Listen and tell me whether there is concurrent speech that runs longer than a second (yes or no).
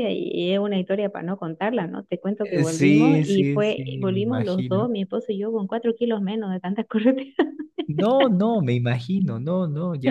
yes